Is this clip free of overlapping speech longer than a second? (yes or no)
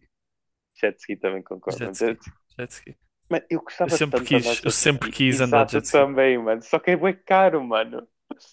no